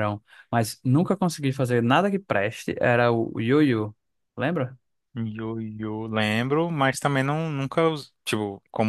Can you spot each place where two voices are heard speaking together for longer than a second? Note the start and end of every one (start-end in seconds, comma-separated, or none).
none